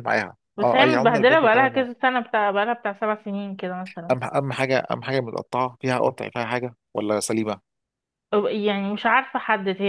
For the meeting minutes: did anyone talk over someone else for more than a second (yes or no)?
yes